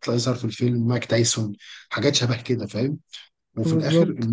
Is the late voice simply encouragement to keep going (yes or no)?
yes